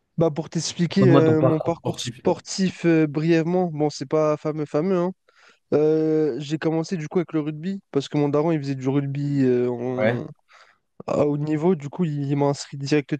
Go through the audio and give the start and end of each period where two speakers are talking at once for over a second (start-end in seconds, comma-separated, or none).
0.9-2.4